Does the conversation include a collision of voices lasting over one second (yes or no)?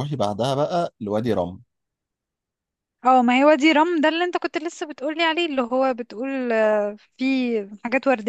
no